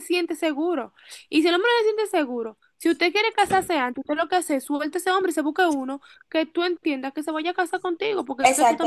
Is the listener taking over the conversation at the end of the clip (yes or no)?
yes